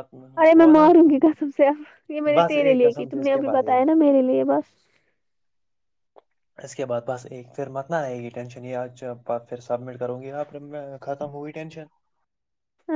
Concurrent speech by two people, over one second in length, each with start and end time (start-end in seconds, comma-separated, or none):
2.4-3.9